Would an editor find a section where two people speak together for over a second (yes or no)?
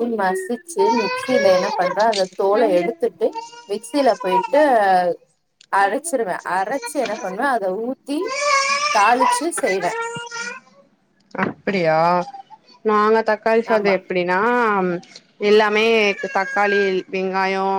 no